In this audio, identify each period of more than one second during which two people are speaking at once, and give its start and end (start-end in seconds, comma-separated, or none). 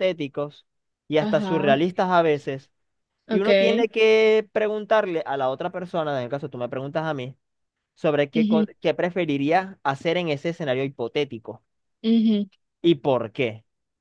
none